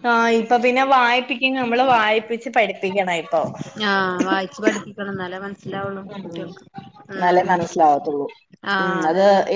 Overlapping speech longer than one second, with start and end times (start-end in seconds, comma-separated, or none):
none